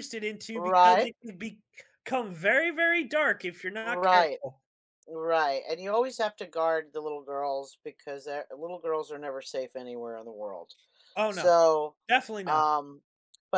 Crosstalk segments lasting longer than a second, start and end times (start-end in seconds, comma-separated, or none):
none